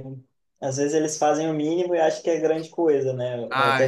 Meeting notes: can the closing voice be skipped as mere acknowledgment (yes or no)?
yes